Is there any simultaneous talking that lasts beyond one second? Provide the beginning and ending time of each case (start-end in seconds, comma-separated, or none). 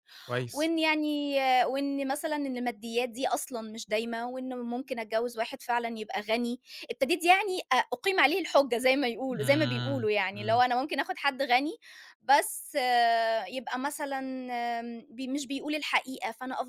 9.3-10.6